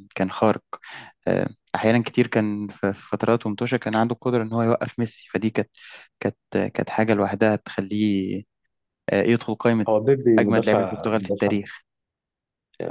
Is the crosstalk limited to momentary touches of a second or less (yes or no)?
no